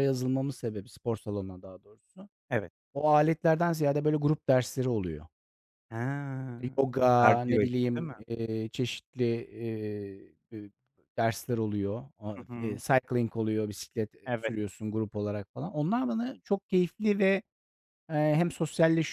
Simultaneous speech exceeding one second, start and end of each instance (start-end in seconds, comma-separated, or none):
6.9-8.1